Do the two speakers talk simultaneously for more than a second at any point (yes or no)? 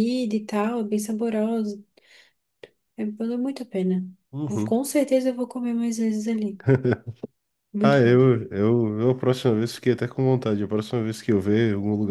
no